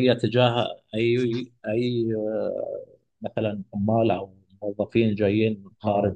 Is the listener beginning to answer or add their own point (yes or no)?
yes